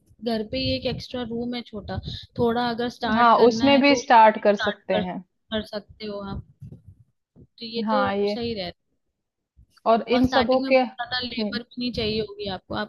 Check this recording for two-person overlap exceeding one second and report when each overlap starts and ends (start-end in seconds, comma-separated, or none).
3.1-5.2, 10.1-11.6